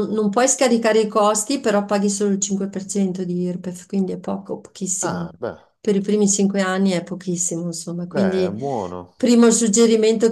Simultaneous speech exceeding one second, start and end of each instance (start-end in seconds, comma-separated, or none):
none